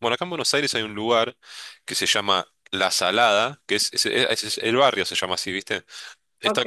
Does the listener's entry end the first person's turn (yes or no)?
no